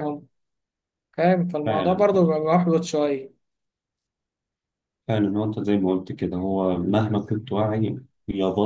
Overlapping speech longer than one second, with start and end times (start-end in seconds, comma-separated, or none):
none